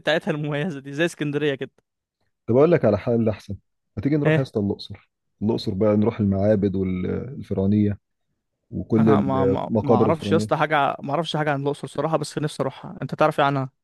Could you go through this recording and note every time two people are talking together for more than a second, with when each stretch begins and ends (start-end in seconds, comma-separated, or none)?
9.0-10.5